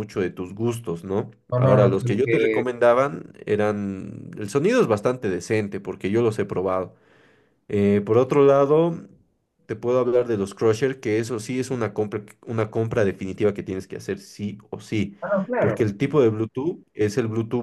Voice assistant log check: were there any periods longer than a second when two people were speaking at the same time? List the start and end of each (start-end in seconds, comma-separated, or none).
1.5-2.7